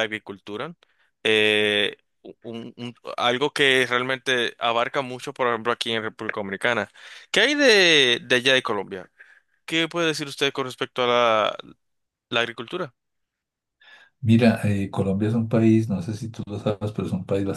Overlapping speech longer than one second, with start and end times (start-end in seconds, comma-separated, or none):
none